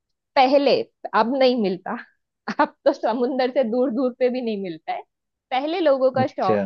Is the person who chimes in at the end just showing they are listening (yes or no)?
yes